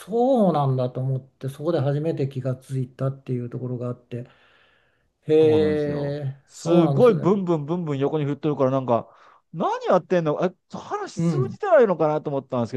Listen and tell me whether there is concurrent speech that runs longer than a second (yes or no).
yes